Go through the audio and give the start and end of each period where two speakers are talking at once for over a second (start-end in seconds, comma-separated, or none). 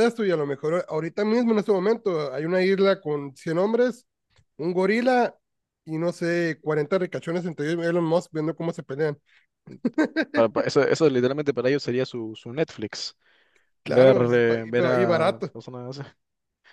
13.8-15.5